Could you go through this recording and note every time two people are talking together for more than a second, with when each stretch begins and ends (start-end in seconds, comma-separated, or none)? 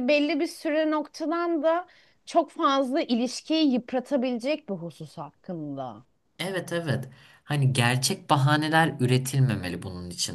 none